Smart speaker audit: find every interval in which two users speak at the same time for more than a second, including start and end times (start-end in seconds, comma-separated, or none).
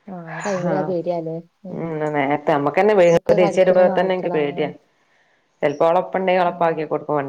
3.2-4.6